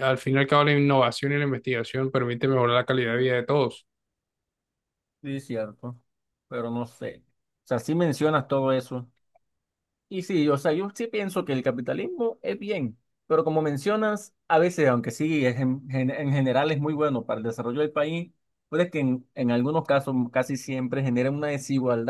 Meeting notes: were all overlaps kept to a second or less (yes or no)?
yes